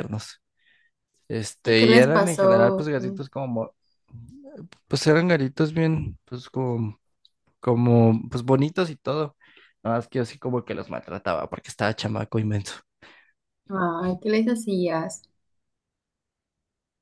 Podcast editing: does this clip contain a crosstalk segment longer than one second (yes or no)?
yes